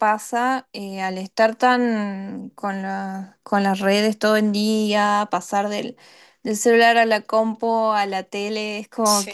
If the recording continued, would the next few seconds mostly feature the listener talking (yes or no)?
no